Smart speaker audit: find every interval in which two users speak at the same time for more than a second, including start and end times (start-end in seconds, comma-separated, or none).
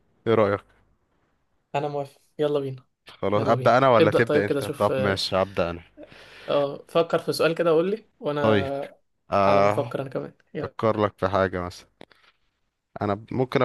3.3-5.2